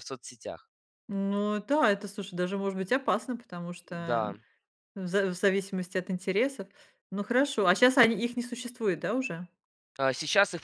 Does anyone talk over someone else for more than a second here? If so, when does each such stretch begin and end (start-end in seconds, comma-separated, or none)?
none